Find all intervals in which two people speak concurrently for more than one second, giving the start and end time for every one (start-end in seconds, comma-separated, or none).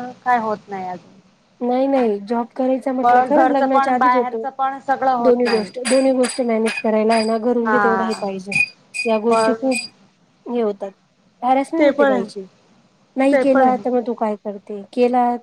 3.0-4.3